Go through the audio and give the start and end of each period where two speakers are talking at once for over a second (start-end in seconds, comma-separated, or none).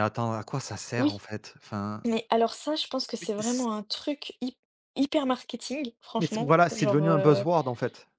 6.2-7.5